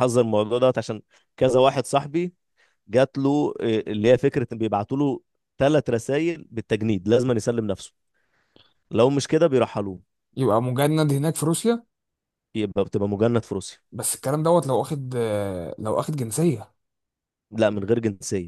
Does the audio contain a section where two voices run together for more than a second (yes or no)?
no